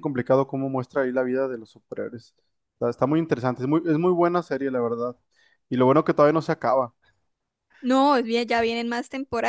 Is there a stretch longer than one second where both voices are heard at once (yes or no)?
no